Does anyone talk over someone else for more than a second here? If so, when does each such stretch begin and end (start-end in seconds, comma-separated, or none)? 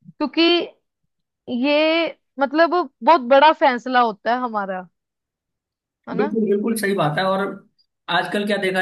none